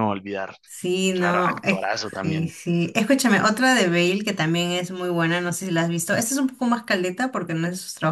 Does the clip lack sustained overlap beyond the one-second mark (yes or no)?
no